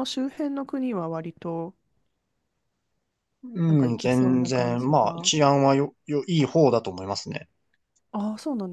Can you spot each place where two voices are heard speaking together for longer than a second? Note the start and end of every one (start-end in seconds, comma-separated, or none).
3.7-5.3